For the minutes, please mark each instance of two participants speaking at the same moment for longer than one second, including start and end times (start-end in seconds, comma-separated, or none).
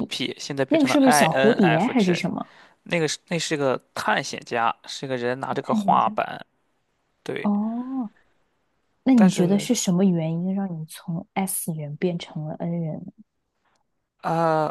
0.7-2.2